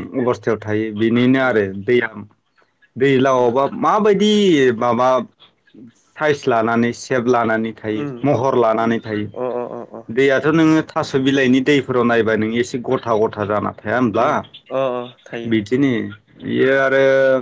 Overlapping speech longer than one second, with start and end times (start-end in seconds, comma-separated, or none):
none